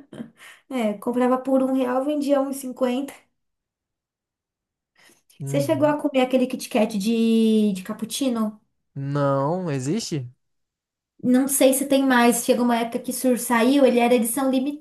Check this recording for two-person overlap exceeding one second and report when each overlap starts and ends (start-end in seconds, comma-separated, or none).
none